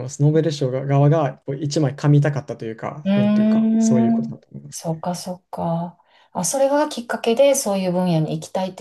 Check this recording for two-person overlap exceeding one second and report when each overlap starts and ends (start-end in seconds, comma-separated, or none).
3.0-4.9